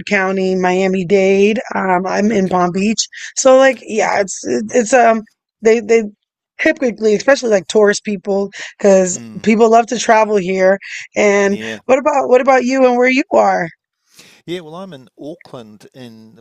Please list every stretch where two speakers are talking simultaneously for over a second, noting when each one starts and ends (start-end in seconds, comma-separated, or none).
none